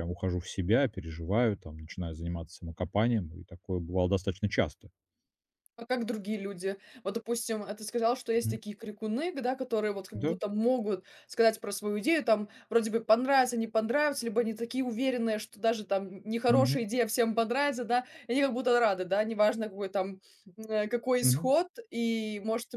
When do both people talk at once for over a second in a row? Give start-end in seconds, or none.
none